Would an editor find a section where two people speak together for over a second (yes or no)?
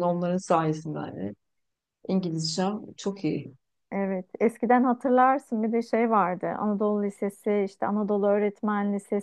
no